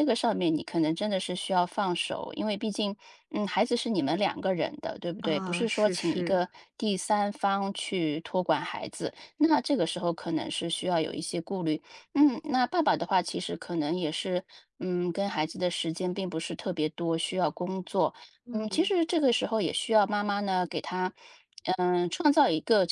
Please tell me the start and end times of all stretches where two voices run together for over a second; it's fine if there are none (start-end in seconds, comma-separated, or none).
5.2-6.5